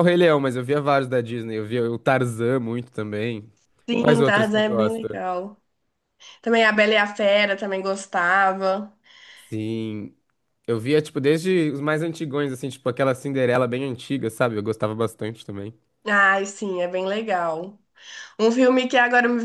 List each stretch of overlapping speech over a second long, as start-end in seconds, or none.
4.0-5.2